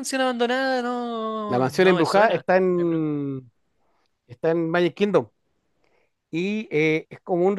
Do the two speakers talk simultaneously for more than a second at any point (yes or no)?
yes